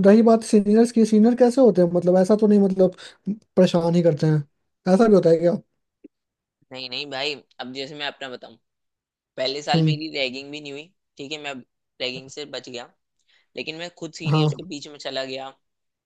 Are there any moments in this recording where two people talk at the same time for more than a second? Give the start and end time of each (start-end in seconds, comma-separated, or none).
none